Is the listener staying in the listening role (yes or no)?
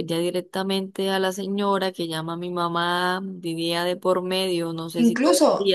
no